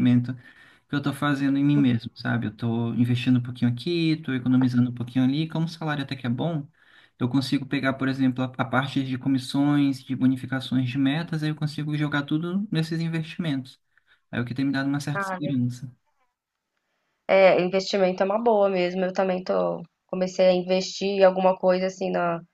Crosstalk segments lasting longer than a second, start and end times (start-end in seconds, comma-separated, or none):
none